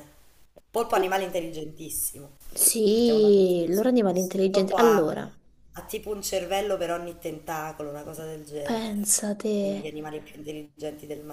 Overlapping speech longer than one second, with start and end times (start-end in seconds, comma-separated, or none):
2.9-5.0